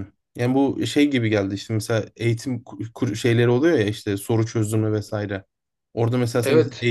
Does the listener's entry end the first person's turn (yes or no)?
no